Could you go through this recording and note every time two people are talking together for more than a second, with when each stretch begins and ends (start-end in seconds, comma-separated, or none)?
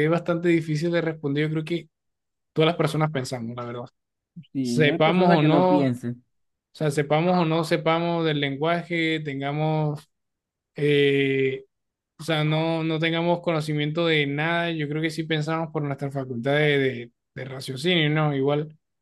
4.6-5.9